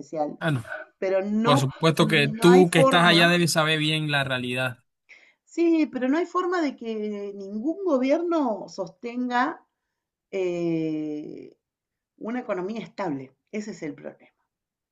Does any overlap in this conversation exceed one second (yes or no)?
yes